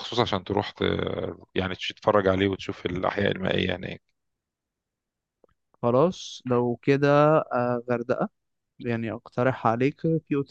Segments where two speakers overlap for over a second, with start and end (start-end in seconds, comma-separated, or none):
none